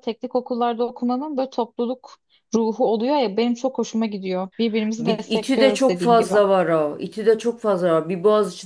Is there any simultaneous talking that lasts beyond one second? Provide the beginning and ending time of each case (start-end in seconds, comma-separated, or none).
5.0-6.3